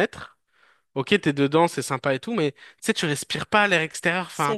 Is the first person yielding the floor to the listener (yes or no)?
no